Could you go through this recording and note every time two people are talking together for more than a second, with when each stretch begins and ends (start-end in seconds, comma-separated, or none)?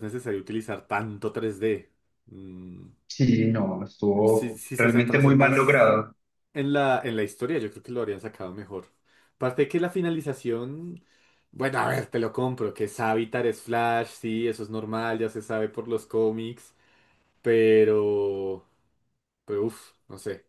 4.3-5.9